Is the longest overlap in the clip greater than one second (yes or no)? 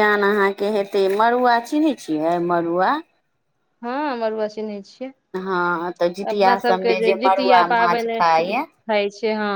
yes